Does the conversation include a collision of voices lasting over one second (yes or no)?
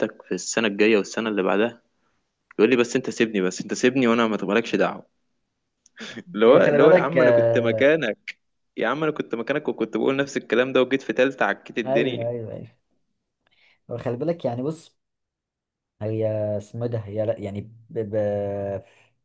yes